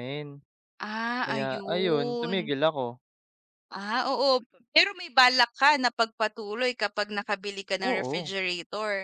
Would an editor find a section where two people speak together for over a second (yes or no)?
yes